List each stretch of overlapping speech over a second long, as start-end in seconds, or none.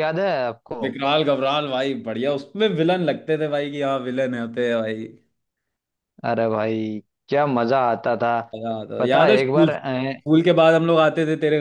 9.0-10.2